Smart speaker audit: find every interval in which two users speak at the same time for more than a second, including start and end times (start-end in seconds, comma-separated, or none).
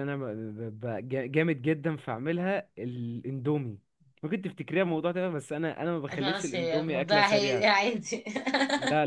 6.1-7.7